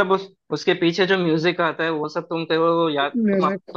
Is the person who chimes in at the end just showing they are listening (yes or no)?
yes